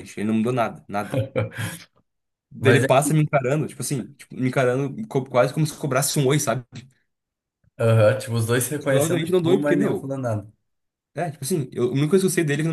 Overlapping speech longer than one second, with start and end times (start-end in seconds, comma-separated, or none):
8.9-10.1